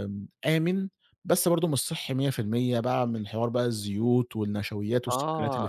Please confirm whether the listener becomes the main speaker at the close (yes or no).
yes